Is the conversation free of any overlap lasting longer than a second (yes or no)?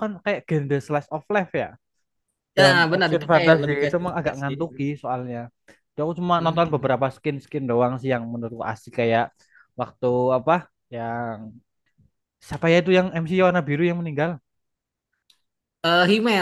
no